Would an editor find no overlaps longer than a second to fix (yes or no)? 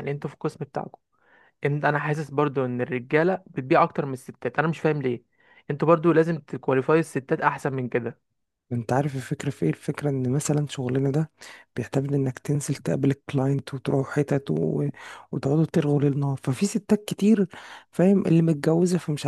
yes